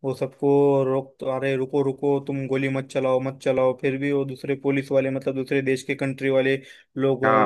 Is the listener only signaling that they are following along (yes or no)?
yes